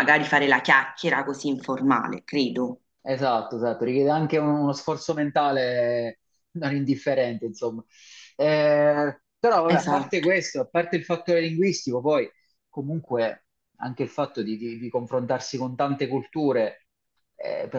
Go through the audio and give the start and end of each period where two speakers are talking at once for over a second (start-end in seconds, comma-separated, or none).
none